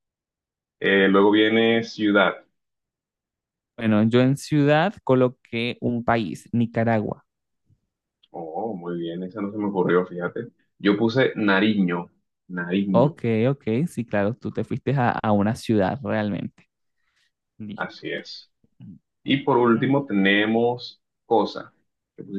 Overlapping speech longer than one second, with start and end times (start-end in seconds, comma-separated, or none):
none